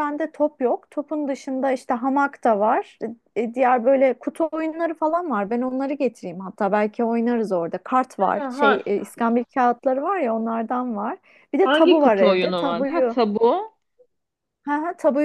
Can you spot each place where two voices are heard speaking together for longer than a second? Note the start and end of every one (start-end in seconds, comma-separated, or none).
11.6-13.2